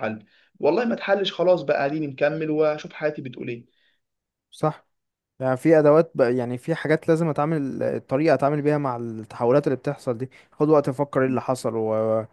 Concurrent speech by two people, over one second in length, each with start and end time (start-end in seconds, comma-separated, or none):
none